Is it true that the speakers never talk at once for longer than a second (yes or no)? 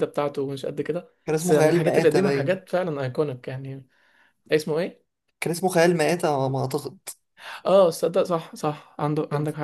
no